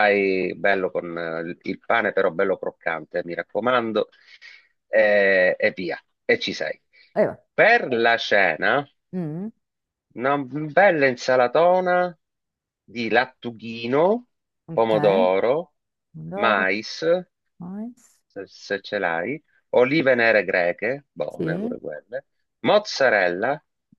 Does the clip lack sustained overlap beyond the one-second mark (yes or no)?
yes